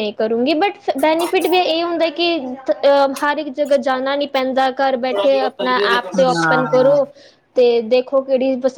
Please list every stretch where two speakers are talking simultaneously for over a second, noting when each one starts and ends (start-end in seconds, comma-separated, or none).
5.5-7.0